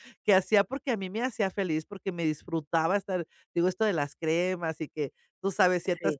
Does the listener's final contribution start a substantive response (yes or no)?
no